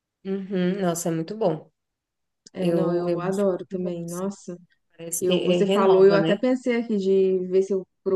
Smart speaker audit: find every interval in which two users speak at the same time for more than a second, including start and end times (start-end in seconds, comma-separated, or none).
2.6-4.3, 5.2-6.4